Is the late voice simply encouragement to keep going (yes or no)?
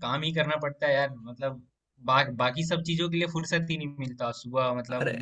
yes